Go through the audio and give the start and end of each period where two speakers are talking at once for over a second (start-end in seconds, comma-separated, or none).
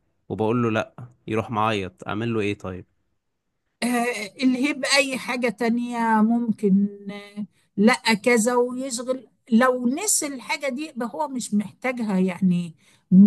none